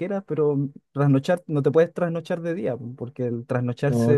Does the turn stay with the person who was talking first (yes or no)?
yes